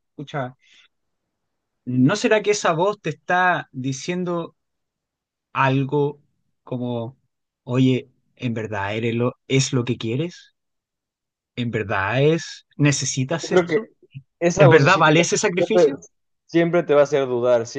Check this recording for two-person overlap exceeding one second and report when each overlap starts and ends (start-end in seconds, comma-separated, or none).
14.6-15.9